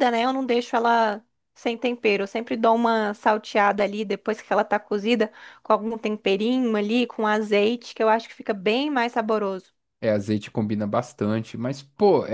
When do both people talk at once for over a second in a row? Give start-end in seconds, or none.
none